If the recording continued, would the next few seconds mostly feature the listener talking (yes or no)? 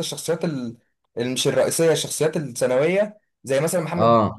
no